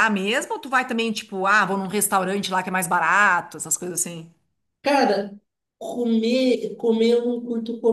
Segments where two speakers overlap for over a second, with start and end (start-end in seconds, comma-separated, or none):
none